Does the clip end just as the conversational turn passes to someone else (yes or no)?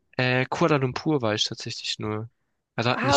yes